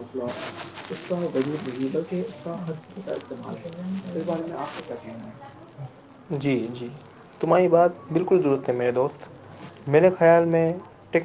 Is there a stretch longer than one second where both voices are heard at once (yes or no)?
no